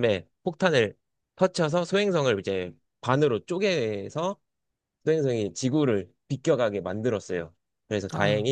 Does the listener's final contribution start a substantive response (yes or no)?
no